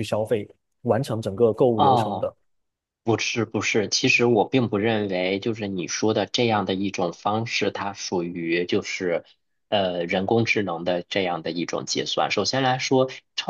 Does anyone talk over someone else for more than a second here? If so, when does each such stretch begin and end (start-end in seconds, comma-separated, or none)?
none